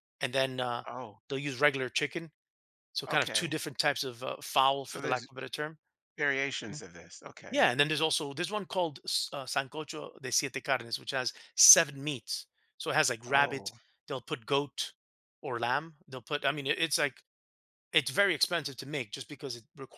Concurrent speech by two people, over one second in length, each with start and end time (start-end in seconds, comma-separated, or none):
none